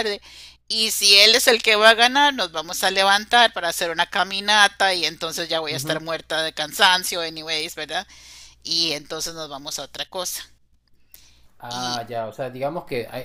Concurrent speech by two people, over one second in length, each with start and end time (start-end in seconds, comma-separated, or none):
none